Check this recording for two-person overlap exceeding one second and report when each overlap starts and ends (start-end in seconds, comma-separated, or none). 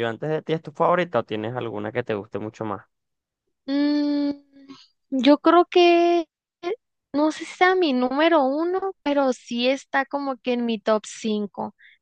none